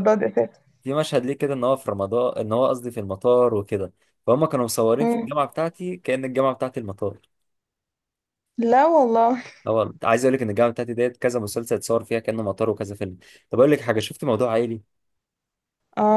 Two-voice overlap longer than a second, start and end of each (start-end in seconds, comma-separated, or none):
none